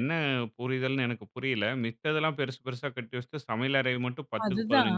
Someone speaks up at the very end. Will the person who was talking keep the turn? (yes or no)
yes